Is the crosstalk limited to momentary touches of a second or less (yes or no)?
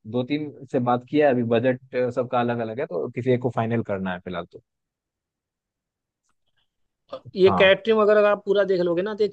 yes